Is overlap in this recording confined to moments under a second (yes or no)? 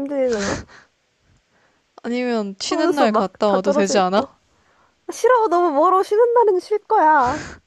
no